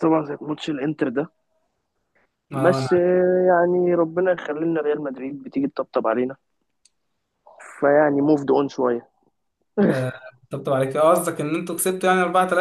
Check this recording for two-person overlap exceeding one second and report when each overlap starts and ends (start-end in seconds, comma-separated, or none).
none